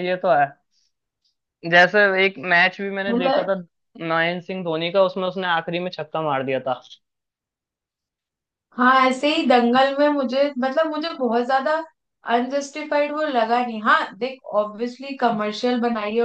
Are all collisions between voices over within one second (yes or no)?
yes